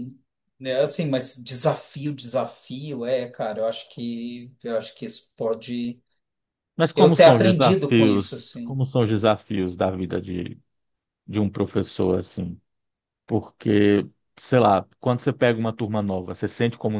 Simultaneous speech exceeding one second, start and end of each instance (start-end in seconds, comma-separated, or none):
7.0-8.8